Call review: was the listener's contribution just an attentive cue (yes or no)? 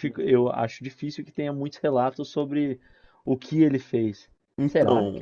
no